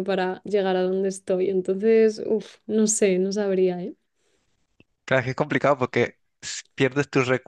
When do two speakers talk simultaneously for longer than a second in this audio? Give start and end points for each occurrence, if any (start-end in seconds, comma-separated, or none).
none